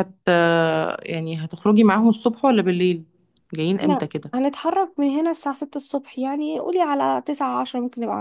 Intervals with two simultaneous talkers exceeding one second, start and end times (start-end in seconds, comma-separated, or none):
none